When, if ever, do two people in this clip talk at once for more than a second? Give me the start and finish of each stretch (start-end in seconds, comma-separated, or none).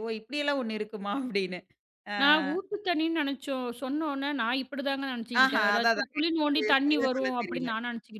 5.4-7.7